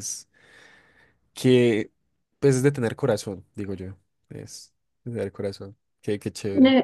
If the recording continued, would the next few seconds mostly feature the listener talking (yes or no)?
yes